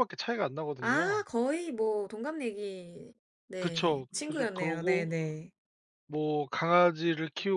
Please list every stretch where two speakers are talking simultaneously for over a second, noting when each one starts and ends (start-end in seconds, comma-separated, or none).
3.6-5.1